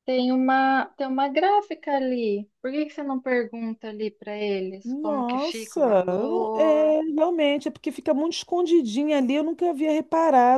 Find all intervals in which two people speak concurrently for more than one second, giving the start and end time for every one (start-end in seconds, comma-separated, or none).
4.8-6.9